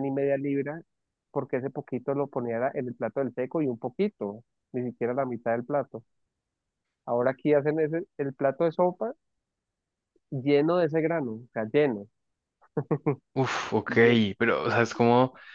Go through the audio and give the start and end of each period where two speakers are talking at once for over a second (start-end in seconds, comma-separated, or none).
none